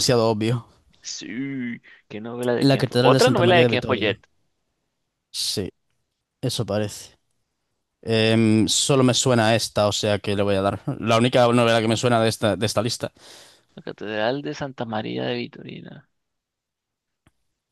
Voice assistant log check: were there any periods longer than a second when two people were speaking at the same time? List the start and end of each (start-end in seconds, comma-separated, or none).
2.6-4.2